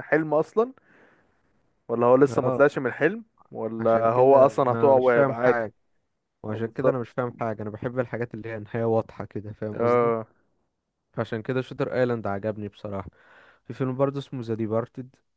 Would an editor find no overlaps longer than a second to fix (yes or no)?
no